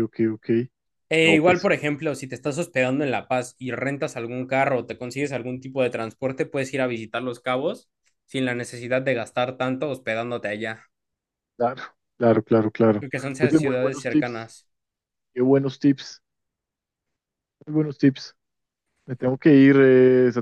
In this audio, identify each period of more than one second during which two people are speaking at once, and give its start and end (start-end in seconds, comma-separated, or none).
13.0-14.5